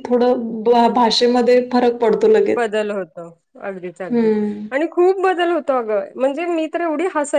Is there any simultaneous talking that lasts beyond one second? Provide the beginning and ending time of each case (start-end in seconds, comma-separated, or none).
none